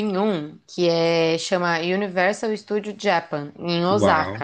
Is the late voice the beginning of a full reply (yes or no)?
yes